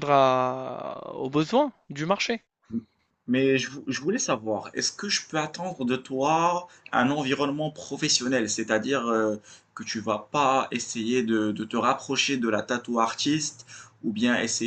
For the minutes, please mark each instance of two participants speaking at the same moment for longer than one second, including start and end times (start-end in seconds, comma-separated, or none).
none